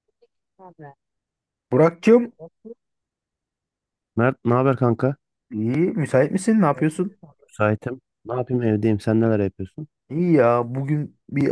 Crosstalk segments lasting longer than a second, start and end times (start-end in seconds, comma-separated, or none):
none